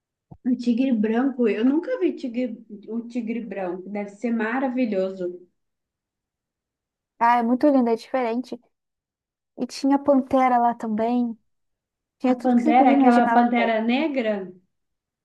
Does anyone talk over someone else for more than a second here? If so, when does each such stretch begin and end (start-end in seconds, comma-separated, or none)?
12.3-13.8